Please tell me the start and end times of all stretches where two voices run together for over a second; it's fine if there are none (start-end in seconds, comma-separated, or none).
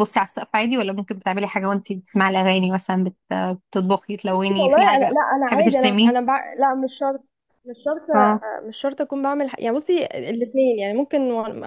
4.5-6.2